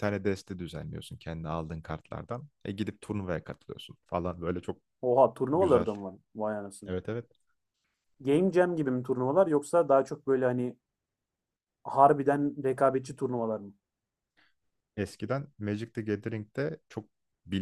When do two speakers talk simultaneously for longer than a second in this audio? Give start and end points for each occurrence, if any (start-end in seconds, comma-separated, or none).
none